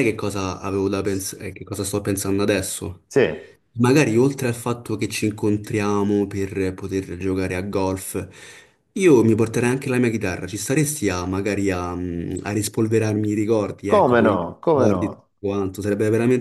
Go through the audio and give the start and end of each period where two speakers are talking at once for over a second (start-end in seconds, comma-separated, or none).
13.9-15.3